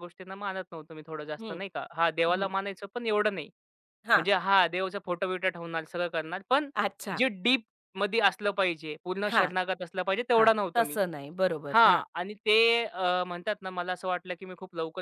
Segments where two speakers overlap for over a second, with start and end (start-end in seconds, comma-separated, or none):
none